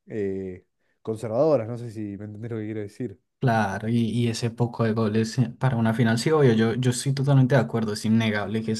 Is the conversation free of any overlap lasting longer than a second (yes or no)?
yes